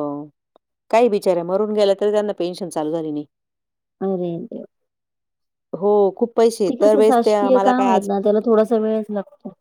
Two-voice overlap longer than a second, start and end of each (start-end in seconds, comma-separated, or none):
none